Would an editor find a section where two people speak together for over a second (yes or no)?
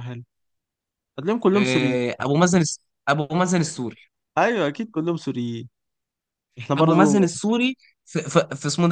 no